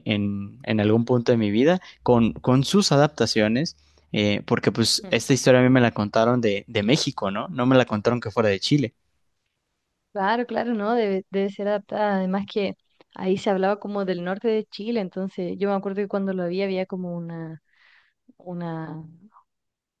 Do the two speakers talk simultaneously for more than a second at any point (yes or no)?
no